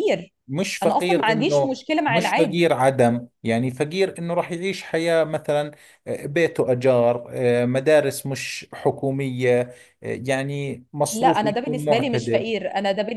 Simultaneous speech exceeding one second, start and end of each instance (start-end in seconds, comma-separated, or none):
0.8-2.7, 11.1-12.5